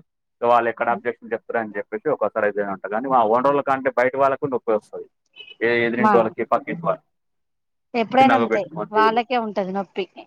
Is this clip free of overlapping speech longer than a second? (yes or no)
yes